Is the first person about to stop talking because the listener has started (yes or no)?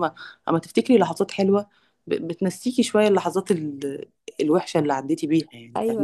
yes